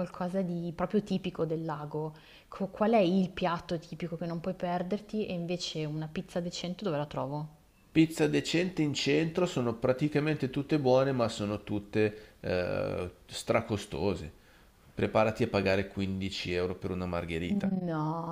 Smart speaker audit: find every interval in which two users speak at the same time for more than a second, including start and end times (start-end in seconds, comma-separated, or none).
none